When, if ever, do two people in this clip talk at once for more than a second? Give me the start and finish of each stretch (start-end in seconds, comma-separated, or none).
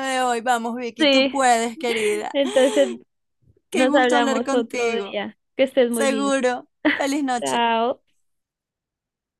3.7-5.2